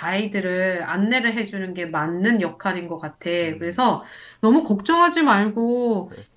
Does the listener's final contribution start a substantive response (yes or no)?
no